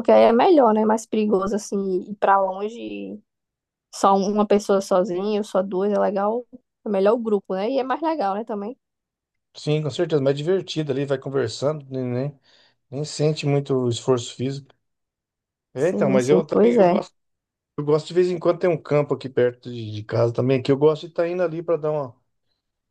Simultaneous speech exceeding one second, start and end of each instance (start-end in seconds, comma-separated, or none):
15.7-17.0